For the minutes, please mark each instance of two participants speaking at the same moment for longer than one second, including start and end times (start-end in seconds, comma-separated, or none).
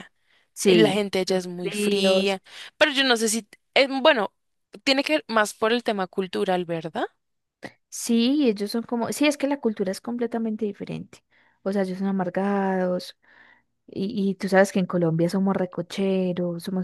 0.6-2.4